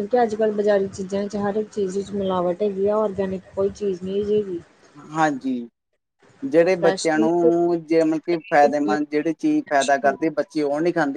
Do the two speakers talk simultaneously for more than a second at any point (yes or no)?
no